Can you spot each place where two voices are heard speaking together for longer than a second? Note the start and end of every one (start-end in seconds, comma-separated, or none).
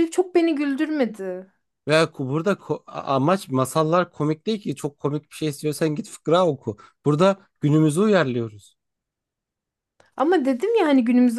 none